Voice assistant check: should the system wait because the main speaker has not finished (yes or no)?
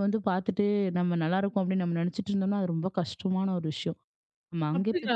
no